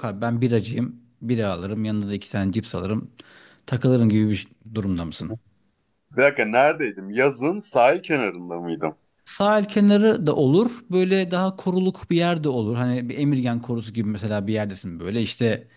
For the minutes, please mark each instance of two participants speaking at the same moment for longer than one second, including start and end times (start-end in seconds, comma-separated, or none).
none